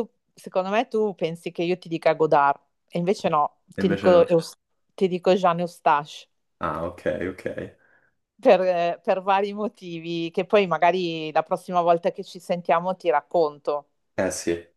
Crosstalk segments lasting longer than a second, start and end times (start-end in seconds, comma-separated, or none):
none